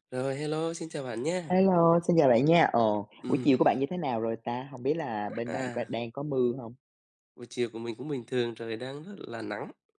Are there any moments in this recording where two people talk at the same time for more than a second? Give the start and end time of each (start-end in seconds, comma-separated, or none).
none